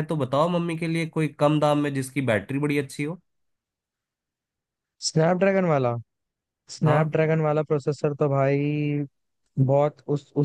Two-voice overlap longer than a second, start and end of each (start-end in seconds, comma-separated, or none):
none